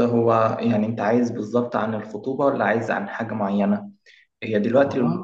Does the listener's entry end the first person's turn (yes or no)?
no